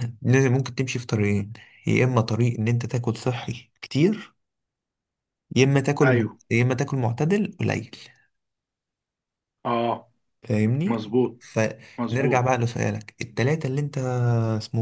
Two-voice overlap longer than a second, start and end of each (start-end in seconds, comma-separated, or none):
none